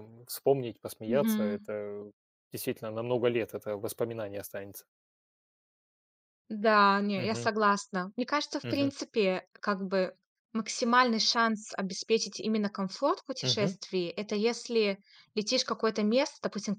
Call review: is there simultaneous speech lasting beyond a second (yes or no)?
no